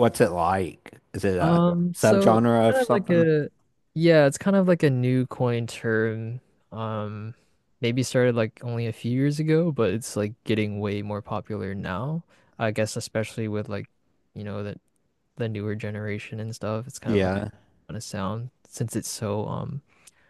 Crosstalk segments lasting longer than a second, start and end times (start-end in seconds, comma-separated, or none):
1.4-3.3